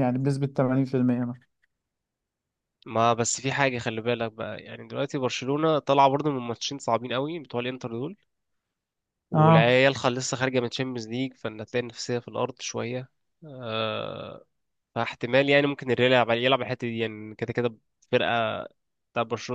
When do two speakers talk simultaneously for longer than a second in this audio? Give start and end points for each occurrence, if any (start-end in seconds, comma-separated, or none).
none